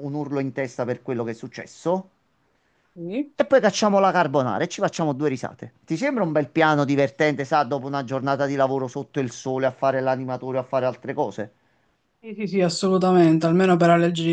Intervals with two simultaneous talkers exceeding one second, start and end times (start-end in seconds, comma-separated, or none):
none